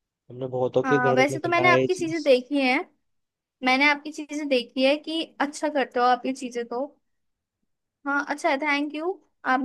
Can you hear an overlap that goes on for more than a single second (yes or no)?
yes